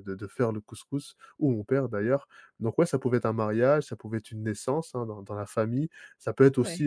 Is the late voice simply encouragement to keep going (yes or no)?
yes